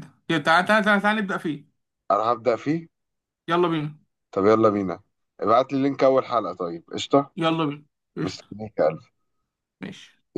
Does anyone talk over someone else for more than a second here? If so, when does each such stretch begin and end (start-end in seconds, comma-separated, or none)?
none